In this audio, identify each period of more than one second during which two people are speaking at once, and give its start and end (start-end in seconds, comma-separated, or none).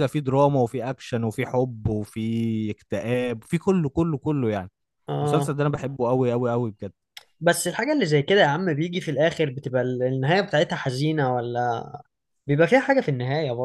none